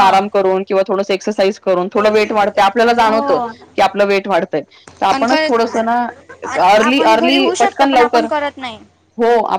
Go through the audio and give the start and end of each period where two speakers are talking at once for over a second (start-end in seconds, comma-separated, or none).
6.7-8.3